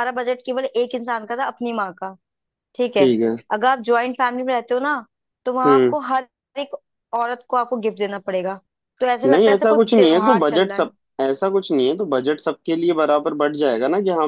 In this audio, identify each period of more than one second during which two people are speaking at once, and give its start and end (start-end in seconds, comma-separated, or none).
9.3-10.9